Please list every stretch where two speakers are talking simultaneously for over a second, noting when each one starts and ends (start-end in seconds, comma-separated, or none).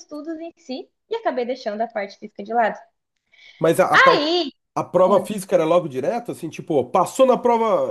none